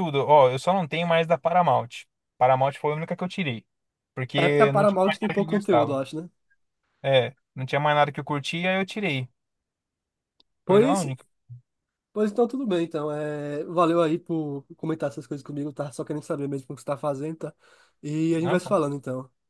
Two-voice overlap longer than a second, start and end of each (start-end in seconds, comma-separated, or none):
4.4-6.0